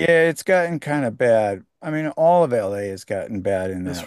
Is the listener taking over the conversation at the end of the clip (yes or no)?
yes